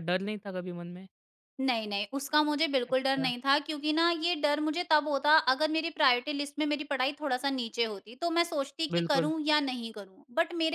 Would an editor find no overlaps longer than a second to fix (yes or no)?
yes